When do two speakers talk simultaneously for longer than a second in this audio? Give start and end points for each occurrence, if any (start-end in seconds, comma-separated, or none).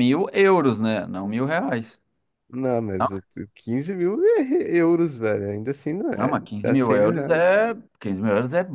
6.1-7.4